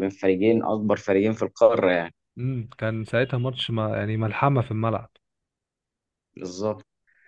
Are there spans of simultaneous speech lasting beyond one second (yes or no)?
no